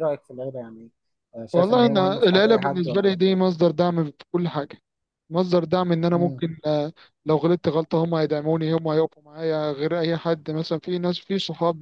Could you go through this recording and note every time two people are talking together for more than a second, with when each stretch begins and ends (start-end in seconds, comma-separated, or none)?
1.5-3.3